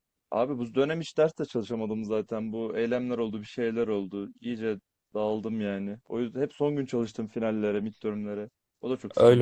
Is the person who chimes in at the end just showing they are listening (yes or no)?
no